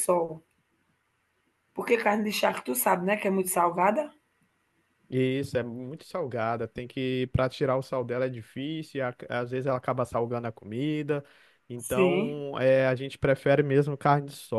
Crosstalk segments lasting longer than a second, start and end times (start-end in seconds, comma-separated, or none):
none